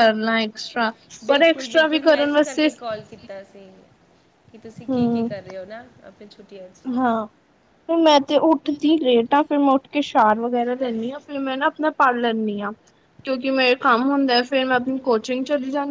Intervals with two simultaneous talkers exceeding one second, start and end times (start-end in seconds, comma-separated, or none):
1.3-2.7